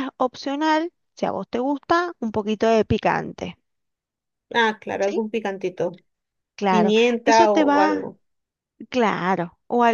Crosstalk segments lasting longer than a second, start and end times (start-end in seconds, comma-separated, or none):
6.7-8.1